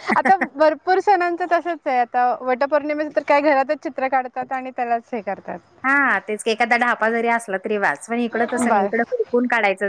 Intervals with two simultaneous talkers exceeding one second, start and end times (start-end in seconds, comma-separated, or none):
none